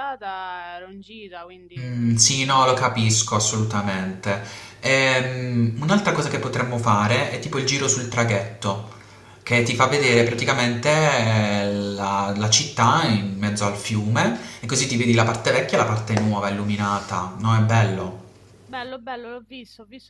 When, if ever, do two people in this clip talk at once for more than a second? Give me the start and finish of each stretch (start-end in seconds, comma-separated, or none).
1.8-3.1